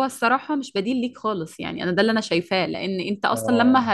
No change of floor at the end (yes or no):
yes